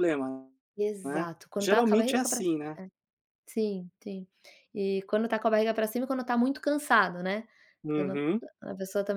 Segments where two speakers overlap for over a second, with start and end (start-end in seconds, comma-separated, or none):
1.0-2.6